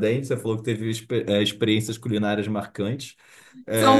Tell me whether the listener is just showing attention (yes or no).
no